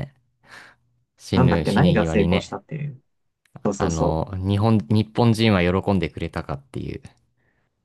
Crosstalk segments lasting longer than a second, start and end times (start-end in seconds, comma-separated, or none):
1.3-2.6